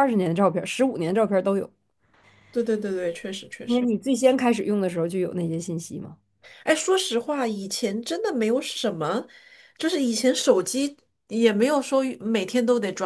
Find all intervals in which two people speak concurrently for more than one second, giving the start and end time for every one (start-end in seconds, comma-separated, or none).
none